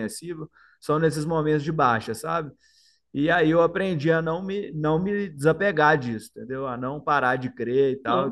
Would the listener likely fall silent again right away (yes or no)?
yes